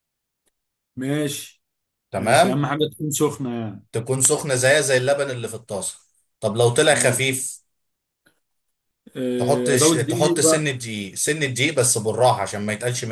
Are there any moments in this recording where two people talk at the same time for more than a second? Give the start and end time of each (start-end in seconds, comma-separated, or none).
9.4-10.7